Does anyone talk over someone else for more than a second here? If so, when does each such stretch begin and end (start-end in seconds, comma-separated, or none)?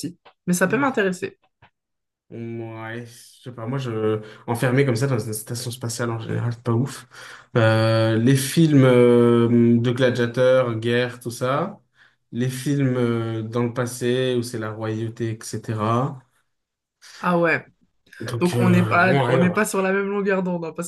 18.4-19.7